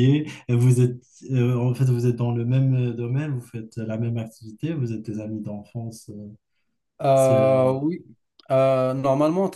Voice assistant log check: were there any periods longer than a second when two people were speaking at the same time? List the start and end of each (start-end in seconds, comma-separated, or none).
none